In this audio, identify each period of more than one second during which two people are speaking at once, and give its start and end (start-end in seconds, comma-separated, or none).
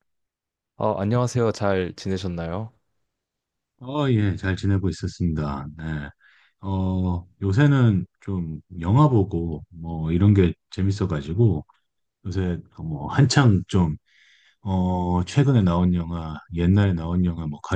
none